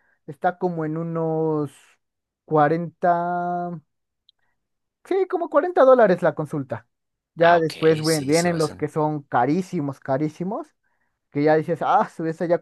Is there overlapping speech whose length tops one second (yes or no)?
yes